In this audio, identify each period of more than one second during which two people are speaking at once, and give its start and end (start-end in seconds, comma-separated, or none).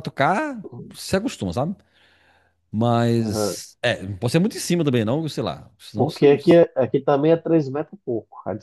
none